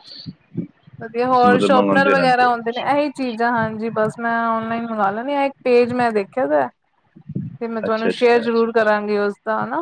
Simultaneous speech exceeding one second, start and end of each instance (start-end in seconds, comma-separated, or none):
1.3-3.0